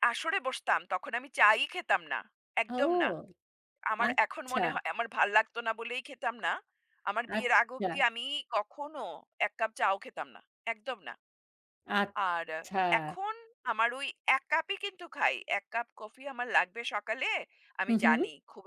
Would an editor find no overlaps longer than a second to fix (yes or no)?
yes